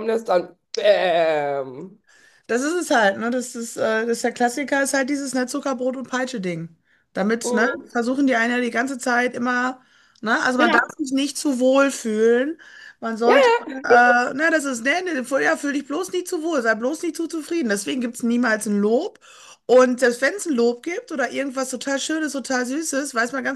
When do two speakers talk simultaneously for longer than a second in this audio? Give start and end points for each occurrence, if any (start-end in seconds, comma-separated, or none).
none